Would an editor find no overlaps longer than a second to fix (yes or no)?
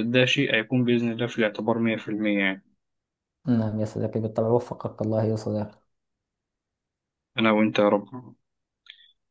yes